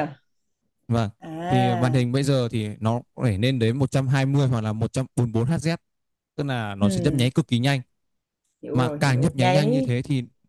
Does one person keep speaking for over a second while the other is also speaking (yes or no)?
yes